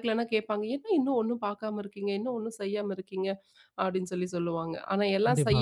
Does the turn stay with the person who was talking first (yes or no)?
yes